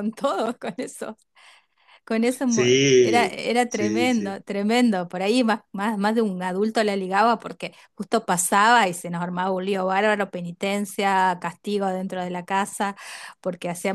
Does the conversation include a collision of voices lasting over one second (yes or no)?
yes